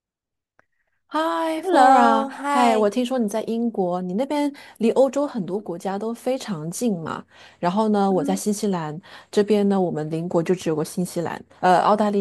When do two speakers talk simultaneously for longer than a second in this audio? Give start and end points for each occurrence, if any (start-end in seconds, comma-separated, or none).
1.6-2.9